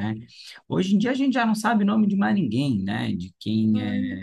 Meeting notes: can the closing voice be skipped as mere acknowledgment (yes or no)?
yes